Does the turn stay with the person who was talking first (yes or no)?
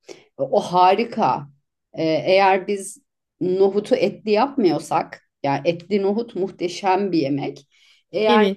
yes